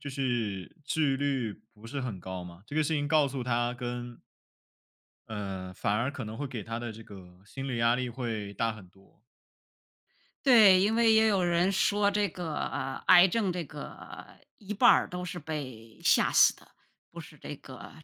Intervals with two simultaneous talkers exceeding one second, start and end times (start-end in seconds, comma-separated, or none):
none